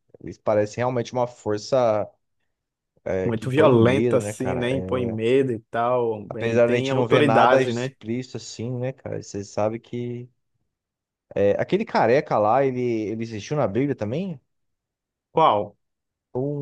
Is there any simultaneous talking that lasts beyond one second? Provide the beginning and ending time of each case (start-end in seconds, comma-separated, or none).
3.2-5.2, 6.3-7.9